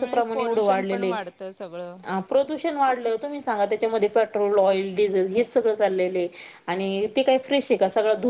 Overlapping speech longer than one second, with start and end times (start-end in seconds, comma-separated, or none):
none